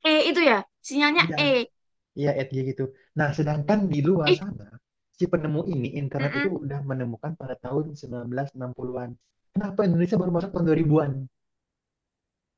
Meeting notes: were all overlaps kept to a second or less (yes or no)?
yes